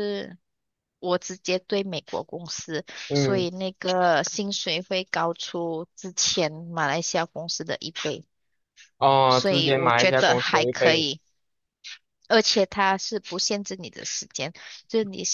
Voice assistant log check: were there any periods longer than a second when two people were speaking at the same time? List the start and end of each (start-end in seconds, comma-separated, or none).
9.3-11.1